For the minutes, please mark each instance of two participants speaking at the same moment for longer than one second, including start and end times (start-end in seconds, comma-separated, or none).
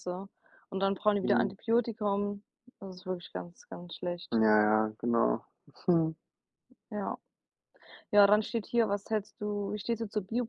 none